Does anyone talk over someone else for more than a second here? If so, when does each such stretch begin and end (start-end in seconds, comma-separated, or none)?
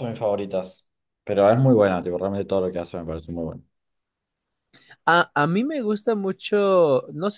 none